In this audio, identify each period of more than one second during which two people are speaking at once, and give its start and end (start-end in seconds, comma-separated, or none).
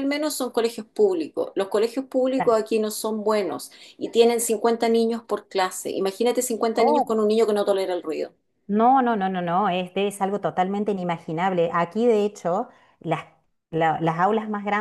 none